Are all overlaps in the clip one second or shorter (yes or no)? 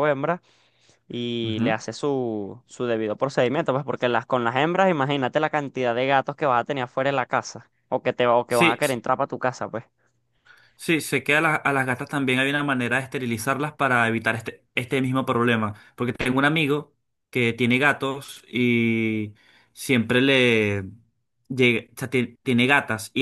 yes